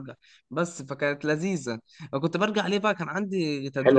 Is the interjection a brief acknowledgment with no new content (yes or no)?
no